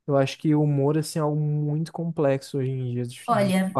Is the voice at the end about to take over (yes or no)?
yes